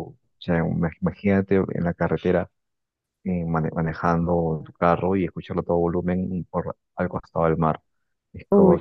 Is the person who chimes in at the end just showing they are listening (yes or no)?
yes